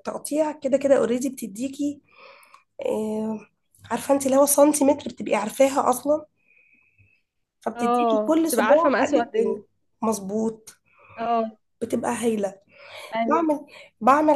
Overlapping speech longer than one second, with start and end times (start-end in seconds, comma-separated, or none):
7.8-9.6